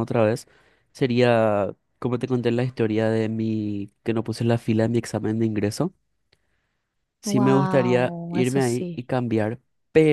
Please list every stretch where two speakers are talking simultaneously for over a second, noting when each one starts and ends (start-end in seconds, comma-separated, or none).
7.3-9.1